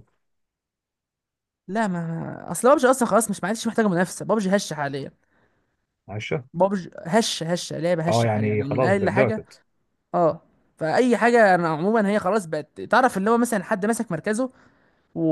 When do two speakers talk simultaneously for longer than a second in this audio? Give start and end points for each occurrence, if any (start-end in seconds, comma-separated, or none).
8.1-9.4